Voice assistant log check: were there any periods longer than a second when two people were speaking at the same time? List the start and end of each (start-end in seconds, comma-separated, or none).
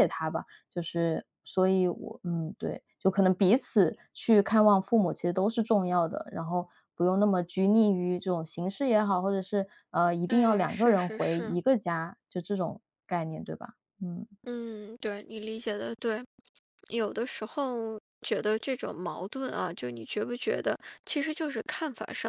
10.3-11.6